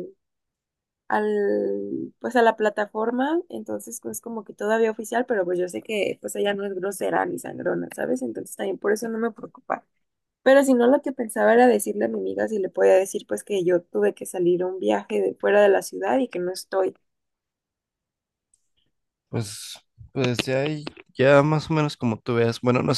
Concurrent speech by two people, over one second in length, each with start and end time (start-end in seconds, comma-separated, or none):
none